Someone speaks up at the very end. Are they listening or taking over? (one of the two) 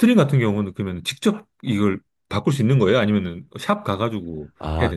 taking over